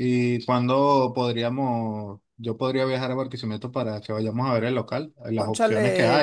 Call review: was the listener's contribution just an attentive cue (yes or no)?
yes